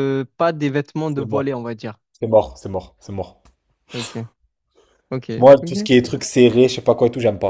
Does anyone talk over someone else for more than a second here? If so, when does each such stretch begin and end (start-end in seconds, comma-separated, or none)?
none